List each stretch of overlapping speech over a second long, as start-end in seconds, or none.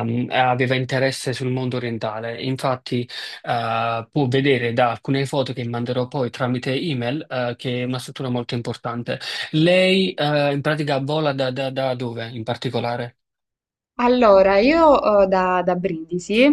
none